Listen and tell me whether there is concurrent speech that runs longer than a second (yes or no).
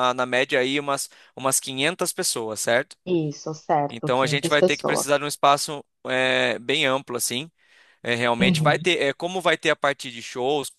yes